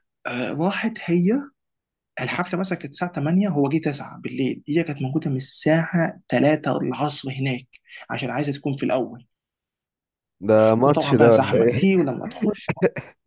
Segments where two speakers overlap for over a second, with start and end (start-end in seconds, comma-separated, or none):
10.8-12.1